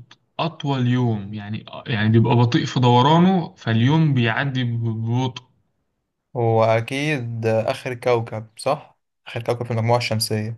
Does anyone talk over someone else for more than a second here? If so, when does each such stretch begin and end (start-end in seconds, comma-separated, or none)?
none